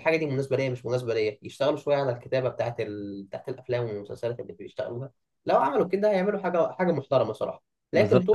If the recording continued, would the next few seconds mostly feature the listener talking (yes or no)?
yes